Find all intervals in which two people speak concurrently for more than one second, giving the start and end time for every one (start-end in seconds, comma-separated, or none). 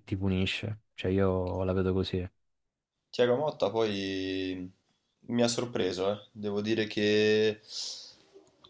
none